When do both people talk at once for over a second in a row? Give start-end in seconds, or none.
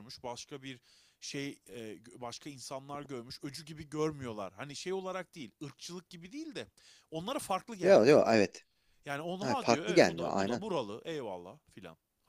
9.4-10.6